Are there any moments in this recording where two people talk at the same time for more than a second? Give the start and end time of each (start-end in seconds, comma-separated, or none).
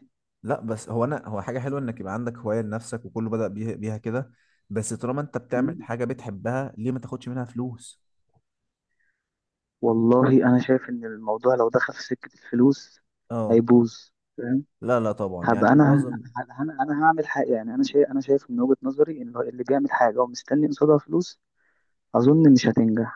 none